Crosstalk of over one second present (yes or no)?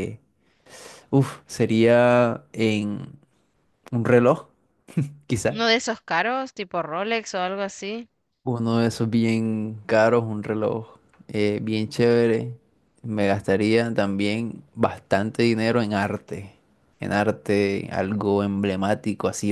no